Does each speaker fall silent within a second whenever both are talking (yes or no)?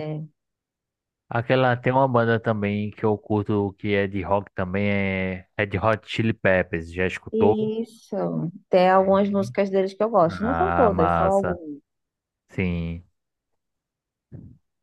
no